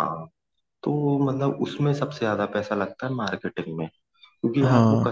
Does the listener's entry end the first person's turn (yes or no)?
no